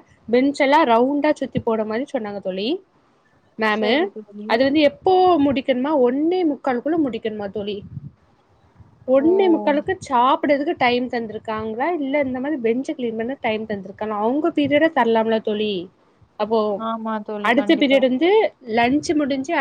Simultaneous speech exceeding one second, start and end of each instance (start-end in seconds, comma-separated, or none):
none